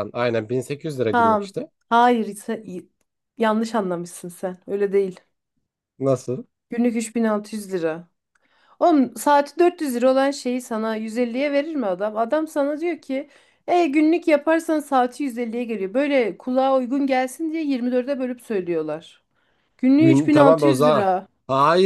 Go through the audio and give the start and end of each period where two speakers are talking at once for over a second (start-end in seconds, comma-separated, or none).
20.0-21.3